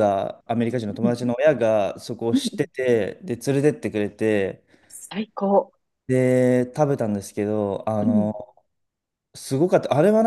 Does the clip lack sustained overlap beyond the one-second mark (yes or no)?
yes